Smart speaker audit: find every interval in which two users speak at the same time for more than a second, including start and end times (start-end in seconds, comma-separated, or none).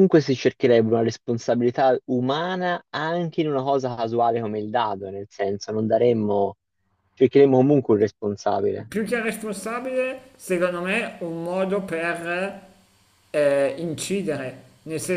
none